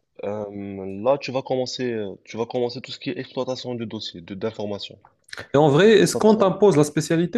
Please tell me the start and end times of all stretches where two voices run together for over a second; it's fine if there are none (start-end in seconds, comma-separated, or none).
none